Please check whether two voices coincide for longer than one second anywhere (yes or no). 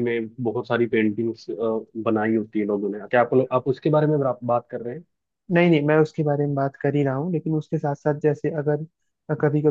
no